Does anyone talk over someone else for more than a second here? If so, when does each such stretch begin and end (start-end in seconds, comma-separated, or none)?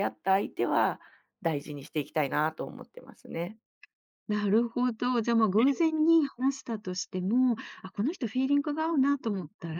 none